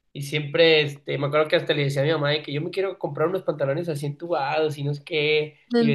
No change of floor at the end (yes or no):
yes